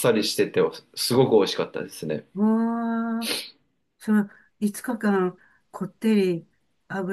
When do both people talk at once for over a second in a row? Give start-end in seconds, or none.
none